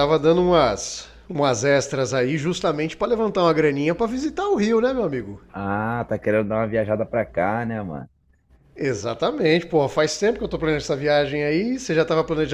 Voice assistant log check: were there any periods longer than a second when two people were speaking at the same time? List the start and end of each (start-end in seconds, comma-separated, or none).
none